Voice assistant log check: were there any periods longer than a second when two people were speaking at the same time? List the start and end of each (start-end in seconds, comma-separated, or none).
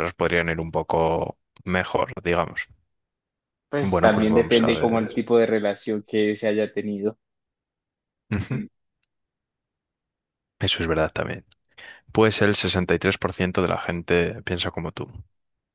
3.8-5.1